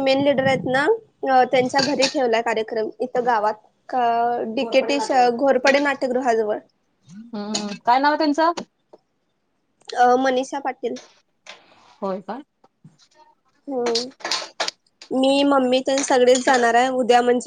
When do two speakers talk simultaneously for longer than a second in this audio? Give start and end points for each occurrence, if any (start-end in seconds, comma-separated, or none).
none